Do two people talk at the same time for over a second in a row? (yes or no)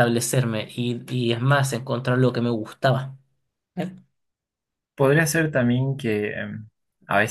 no